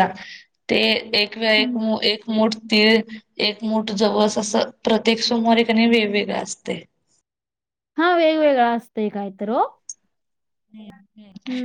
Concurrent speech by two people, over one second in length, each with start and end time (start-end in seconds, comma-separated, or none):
none